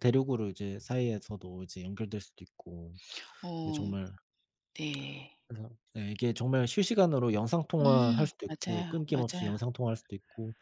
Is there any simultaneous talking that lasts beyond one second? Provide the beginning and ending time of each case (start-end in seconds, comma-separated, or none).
7.8-9.5